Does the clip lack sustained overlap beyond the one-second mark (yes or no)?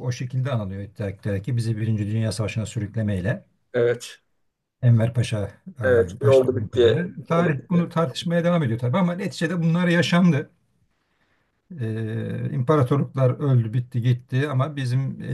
no